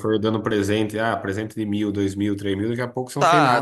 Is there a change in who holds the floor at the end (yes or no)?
yes